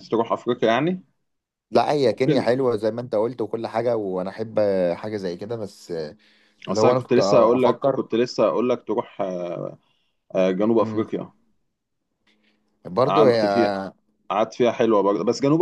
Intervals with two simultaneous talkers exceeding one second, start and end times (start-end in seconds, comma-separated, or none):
6.7-8.0